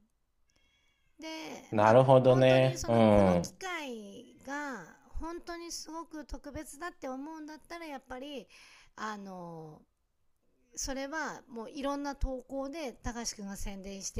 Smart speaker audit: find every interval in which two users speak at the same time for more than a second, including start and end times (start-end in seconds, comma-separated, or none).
1.8-3.6